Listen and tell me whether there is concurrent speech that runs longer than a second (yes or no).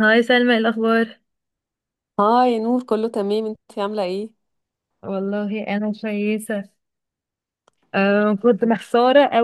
no